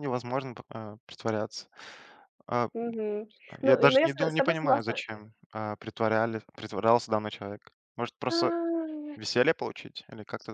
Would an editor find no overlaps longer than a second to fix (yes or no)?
no